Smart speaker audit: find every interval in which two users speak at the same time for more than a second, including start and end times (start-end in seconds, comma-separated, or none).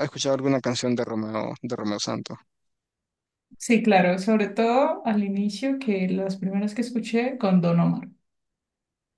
none